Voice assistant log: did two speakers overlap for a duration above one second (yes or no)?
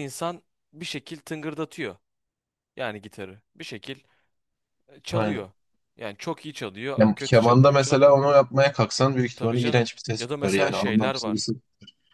yes